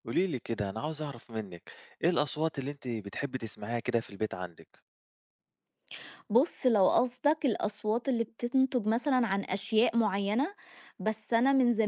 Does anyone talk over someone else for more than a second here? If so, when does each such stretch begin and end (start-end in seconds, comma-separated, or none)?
none